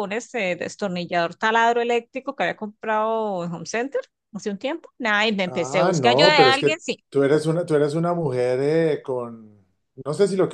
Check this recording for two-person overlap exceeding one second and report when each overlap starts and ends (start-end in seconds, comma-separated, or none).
5.5-6.7